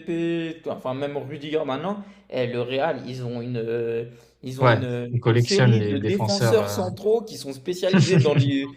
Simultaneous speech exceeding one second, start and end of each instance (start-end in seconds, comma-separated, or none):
4.6-6.8